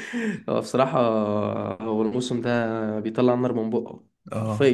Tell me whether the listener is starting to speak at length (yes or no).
yes